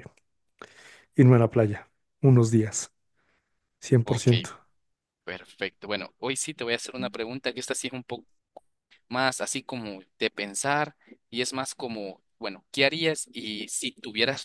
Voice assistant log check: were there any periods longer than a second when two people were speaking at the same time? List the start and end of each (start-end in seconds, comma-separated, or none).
none